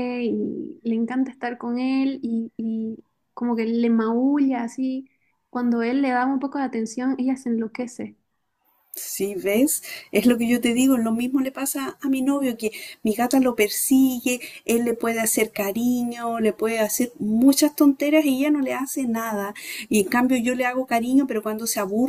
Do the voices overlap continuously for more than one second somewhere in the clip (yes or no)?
no